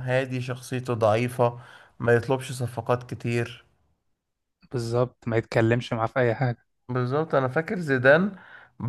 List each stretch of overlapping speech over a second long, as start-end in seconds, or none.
none